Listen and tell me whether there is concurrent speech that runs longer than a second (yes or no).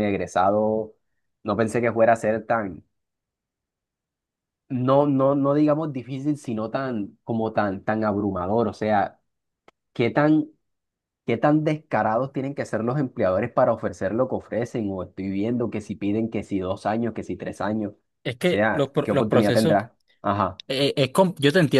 yes